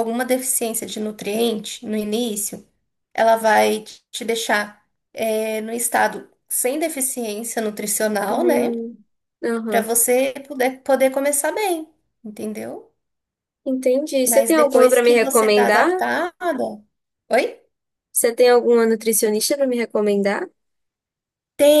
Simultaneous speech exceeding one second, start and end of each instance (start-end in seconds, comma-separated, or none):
14.2-15.9